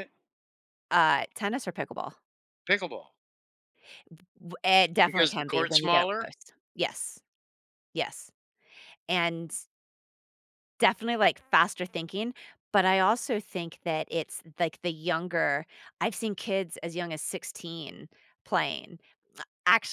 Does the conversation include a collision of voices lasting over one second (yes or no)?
yes